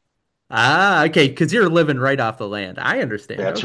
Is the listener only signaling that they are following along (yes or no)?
no